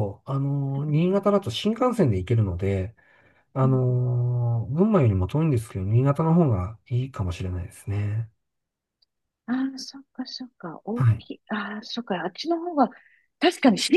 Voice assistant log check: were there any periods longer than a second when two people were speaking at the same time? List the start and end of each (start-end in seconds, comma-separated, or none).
none